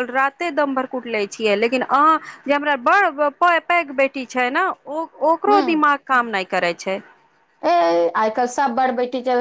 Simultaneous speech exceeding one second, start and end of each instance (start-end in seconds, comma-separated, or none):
none